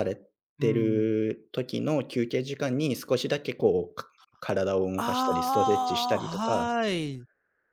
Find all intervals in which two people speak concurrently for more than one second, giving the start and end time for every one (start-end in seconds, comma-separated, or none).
5.0-6.7